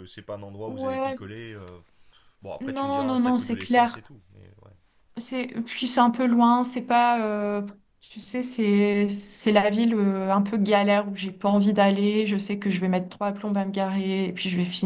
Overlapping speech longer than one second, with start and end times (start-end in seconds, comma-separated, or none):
2.6-4.0